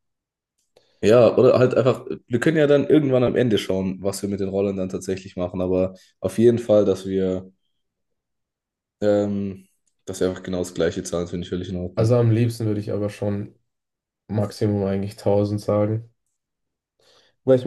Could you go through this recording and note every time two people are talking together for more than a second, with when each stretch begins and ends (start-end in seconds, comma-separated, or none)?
none